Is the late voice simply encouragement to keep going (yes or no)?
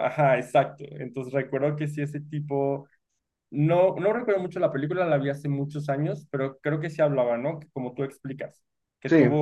yes